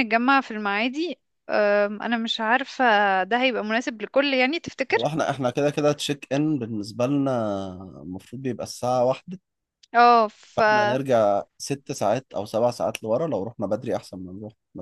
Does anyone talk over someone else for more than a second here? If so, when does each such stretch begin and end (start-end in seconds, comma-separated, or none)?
none